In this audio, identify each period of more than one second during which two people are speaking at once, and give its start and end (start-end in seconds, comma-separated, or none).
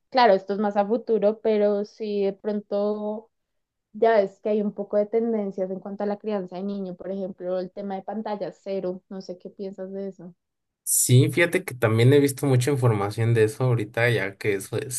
none